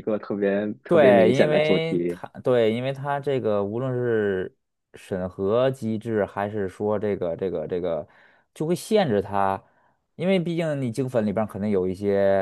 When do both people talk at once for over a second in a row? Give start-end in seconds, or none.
0.9-2.2